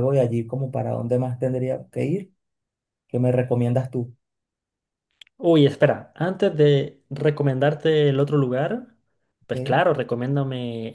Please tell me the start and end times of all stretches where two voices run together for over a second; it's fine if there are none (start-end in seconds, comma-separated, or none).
none